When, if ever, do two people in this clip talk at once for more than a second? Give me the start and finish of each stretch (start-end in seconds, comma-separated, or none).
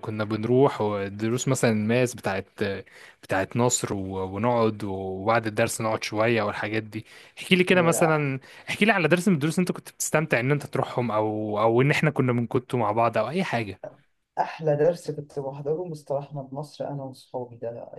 none